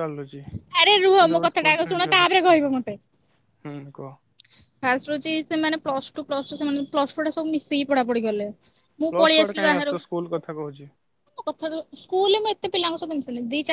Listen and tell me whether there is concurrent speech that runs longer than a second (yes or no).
yes